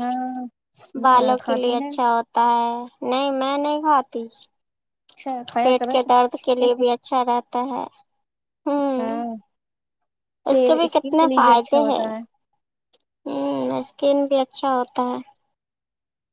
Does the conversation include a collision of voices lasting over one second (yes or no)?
yes